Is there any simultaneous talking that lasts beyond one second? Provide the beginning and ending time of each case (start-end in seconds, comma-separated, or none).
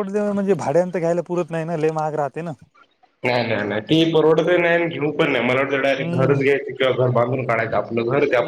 none